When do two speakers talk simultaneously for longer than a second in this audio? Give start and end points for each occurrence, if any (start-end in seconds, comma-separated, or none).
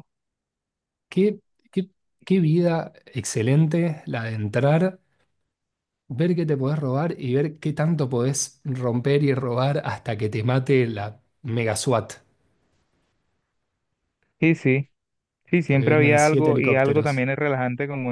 15.7-17.2